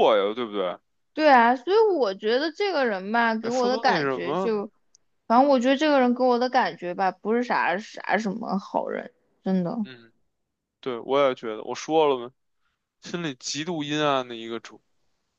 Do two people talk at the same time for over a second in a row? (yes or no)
yes